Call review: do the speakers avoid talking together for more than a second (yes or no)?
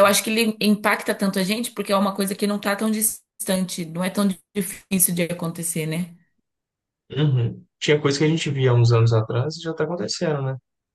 yes